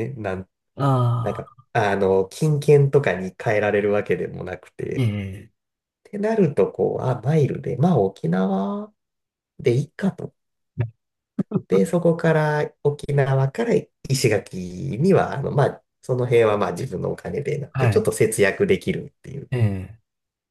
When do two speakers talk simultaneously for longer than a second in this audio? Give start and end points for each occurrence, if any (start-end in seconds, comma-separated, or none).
none